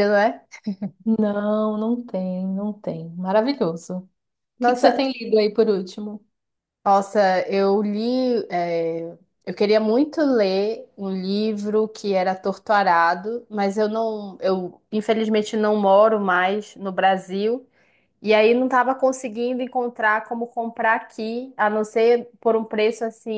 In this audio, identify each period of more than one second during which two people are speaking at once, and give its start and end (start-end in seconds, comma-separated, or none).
none